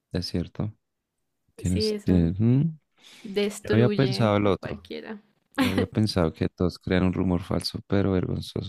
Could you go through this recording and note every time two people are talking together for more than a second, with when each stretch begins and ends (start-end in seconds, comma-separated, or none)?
3.6-4.9